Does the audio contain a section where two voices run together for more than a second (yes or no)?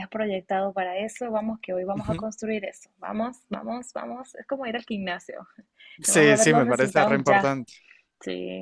yes